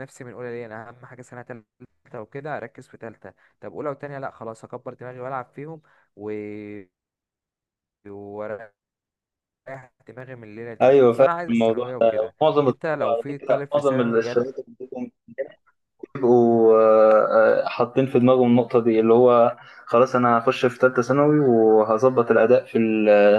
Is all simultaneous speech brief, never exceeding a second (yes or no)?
no